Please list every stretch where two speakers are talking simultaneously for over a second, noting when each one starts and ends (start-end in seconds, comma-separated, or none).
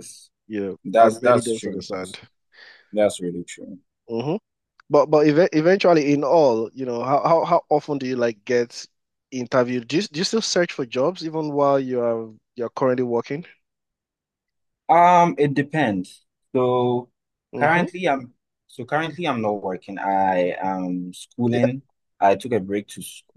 0.8-2.2